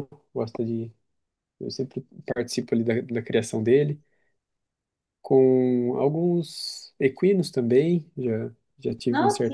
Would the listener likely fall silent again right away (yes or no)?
yes